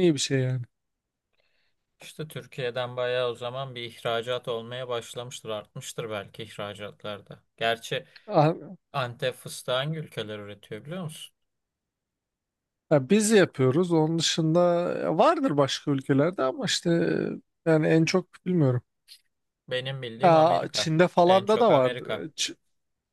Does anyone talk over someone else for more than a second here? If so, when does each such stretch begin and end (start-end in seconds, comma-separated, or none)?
20.2-22.3